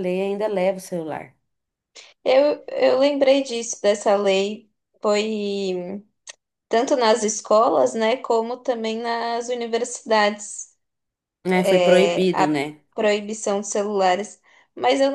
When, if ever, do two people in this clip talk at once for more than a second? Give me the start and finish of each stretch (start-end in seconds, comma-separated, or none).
11.5-12.8